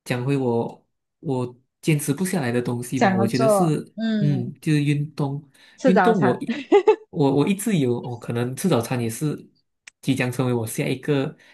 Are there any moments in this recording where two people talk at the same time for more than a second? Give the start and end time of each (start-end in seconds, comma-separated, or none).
2.9-4.5